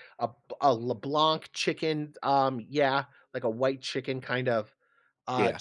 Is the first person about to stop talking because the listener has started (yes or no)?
no